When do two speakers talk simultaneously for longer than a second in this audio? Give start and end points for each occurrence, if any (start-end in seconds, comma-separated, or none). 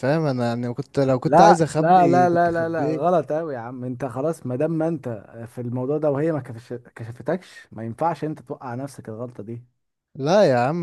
1.2-3.0